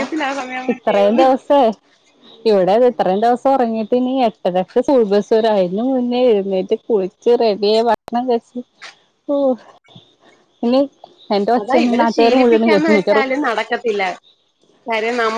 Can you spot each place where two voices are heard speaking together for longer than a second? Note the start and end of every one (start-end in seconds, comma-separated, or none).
11.6-13.3